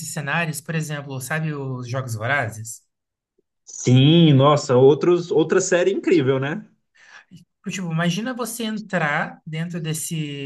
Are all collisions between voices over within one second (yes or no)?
yes